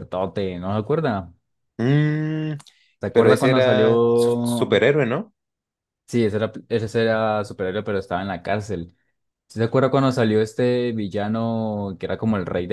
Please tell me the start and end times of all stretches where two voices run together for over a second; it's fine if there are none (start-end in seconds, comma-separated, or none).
3.1-4.8